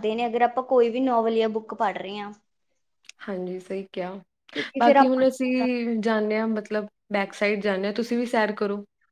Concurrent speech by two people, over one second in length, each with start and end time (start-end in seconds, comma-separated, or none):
none